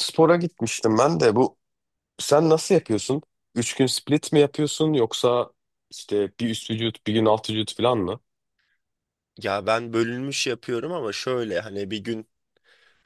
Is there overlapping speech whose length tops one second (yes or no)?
no